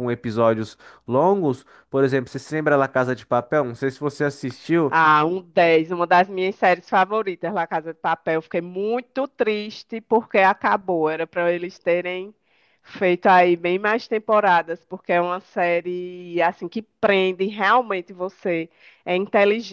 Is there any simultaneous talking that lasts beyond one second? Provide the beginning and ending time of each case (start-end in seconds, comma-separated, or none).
none